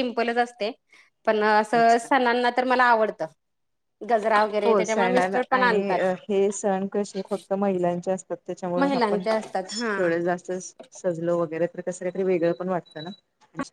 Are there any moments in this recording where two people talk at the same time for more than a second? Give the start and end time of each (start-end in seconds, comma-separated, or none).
4.7-6.0